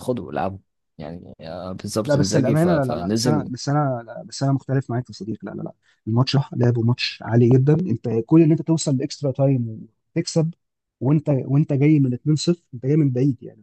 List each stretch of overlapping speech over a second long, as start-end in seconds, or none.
2.1-3.5